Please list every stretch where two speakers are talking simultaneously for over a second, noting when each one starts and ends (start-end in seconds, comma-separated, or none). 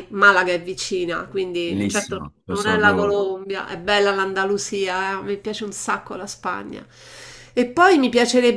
1.6-3.2